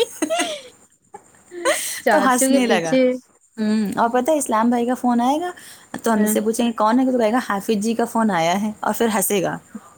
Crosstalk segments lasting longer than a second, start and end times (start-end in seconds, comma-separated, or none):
2.1-3.8